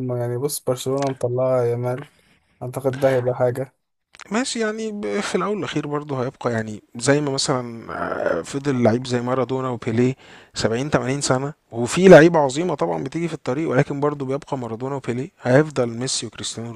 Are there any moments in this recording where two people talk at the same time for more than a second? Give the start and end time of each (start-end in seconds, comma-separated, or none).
none